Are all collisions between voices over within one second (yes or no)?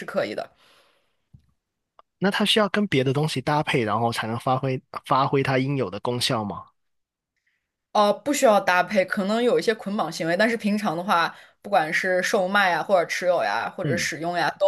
yes